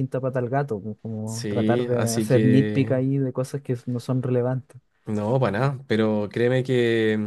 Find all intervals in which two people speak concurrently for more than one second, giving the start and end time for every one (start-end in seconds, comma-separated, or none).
1.2-3.0